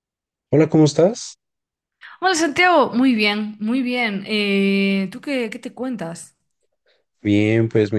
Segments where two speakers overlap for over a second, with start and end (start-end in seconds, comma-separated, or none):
none